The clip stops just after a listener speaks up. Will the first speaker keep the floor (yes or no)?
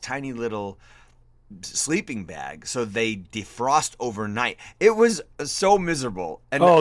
no